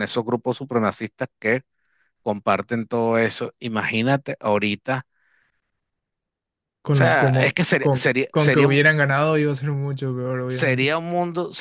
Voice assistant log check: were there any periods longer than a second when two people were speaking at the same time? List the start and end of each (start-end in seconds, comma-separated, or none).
6.9-8.8